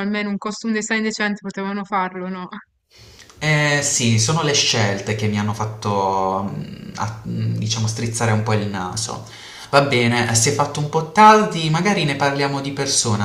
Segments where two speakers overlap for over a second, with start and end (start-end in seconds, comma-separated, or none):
none